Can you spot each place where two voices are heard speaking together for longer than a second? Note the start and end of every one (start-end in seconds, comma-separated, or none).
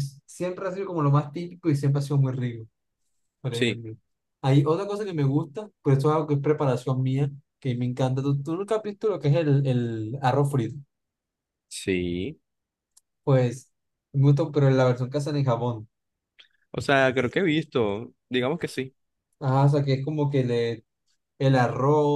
none